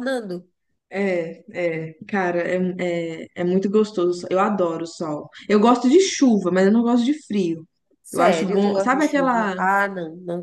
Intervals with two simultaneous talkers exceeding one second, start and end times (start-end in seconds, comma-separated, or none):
8.1-9.6